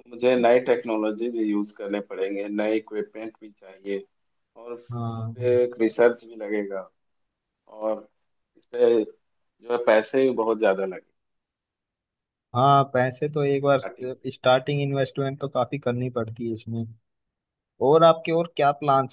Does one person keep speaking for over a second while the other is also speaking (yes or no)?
no